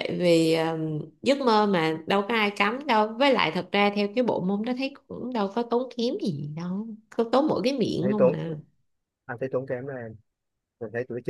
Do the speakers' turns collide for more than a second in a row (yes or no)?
no